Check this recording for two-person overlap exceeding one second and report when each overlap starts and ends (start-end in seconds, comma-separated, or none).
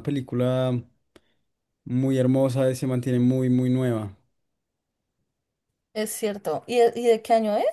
none